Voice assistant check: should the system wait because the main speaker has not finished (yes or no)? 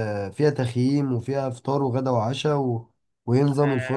no